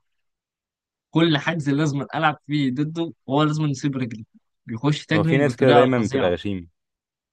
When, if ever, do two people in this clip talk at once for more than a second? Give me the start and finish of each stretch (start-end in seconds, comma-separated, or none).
5.1-6.4